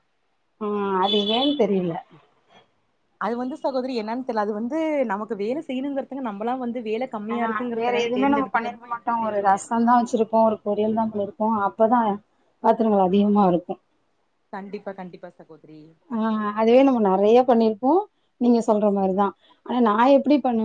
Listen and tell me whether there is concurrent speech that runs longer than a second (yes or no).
no